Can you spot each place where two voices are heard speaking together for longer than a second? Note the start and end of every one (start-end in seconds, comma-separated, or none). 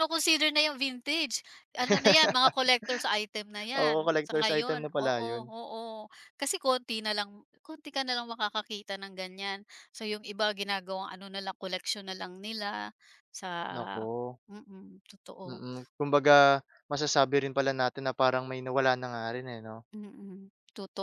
3.8-5.5